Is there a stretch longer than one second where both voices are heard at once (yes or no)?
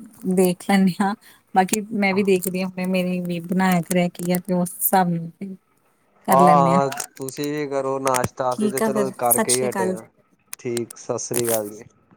yes